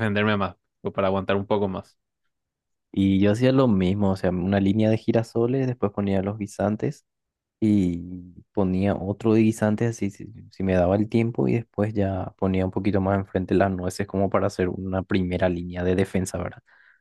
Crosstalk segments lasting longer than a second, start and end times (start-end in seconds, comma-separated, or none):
none